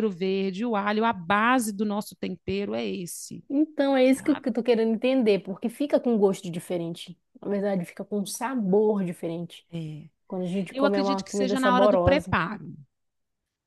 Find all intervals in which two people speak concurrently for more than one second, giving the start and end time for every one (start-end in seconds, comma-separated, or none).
10.7-12.3